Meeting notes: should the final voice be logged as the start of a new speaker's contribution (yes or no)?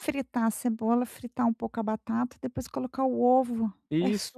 yes